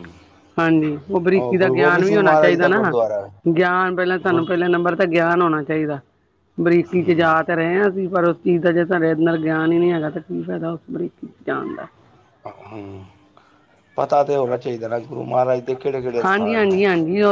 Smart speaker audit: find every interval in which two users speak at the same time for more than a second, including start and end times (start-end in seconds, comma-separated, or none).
1.6-2.9